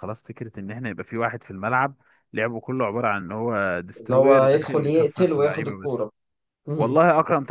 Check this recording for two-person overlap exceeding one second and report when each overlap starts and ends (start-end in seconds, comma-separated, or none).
4.0-6.0